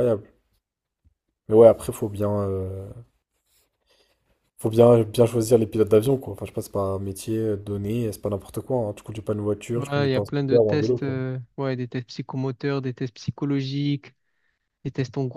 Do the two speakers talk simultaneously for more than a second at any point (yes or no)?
yes